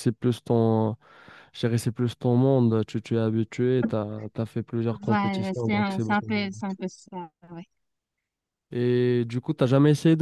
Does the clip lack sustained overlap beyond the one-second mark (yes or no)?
no